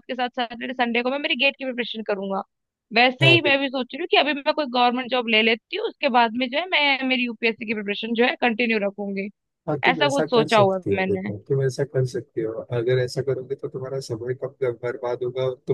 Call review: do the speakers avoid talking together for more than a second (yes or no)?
no